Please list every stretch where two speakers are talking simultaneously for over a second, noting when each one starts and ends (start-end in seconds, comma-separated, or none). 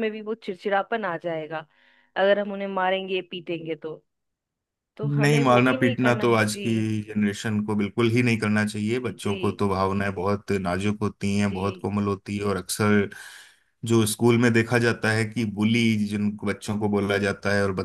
5.0-6.9